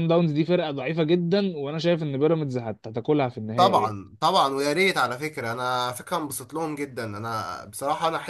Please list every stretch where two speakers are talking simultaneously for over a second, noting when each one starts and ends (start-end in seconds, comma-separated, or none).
none